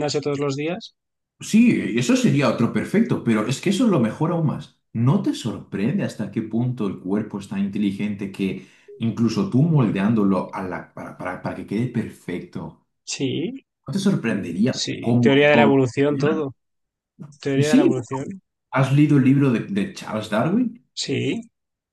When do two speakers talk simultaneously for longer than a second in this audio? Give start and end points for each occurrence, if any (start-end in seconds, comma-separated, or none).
14.7-16.5